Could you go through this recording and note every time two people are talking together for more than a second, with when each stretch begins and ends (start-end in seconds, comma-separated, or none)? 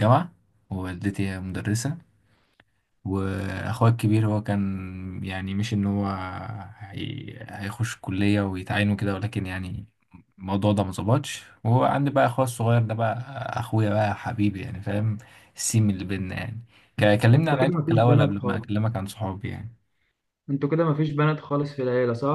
17.3-18.6